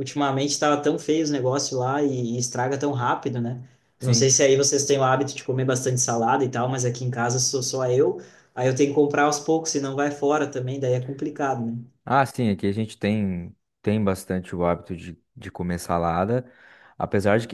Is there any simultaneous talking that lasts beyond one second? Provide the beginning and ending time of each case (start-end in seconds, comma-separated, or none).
none